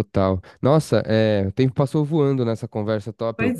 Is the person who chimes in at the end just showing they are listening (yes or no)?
yes